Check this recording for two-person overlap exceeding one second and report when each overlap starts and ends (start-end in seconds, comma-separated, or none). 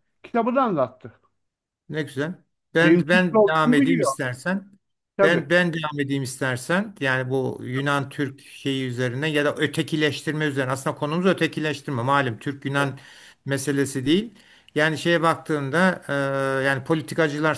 2.8-4.1